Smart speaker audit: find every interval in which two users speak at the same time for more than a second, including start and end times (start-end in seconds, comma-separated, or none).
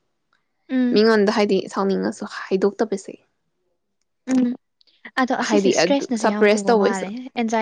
5.5-7.0